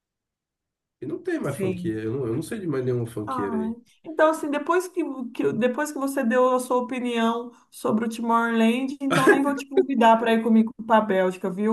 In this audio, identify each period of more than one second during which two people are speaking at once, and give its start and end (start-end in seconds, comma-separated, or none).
none